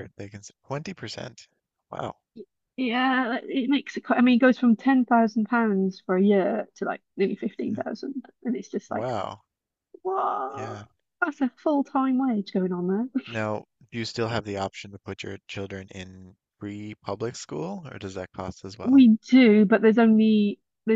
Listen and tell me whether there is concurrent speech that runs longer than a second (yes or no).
no